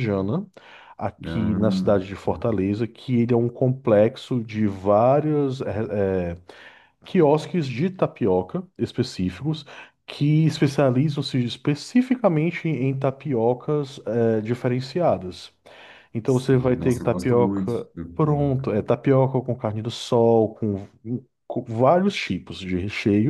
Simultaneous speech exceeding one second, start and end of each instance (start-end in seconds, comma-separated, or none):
16.2-18.7